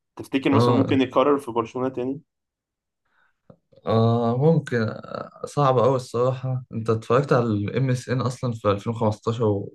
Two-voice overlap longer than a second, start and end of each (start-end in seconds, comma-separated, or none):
none